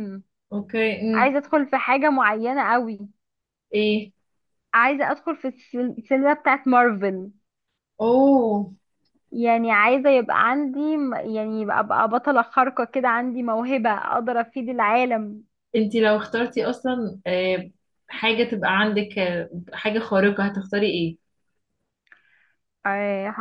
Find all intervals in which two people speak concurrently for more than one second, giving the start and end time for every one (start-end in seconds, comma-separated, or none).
none